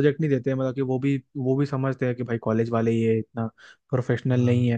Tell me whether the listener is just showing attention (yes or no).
yes